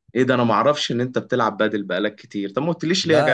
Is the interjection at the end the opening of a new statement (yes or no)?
yes